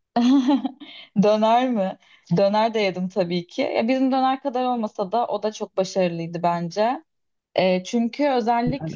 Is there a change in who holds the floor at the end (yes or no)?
no